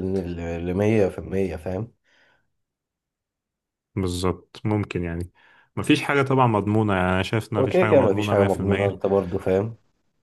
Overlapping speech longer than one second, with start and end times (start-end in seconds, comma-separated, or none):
7.6-9.0